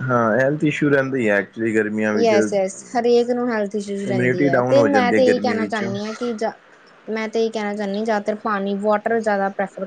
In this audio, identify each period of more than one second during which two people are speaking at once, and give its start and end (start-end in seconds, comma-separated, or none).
3.9-5.8